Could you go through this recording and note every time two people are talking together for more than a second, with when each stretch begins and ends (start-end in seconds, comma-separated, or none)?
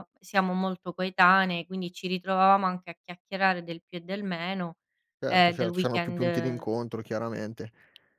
5.3-6.7